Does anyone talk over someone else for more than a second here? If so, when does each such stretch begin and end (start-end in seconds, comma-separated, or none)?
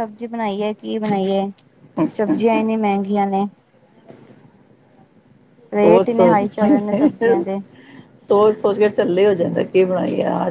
5.8-7.4